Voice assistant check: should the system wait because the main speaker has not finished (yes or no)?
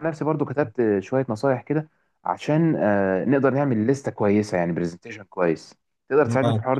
no